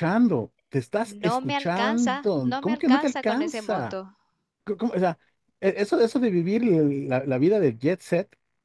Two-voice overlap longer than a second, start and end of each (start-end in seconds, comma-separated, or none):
1.0-4.0